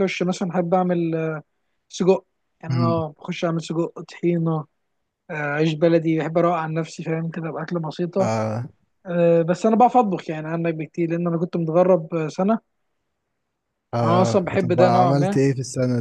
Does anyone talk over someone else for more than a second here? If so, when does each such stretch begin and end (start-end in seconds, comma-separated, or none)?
14.0-15.4